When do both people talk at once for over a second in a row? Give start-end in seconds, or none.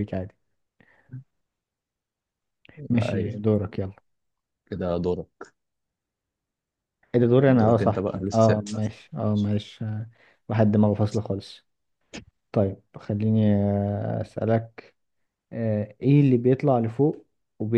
7.5-8.8